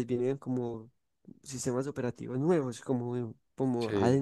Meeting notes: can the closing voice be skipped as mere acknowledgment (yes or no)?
yes